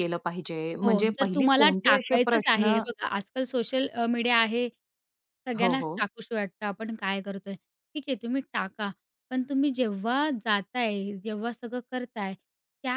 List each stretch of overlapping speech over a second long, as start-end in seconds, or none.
0.8-2.7